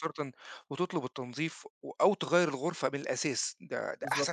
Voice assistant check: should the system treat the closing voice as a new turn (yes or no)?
no